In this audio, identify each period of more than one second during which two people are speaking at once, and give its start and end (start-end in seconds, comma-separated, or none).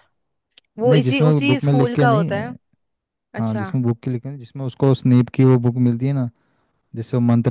0.8-2.5